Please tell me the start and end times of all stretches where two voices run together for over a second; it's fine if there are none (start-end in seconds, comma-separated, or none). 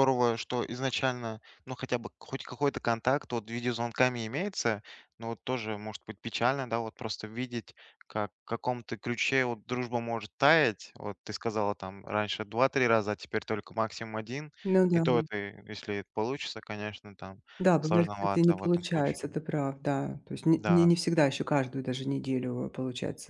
17.8-19.4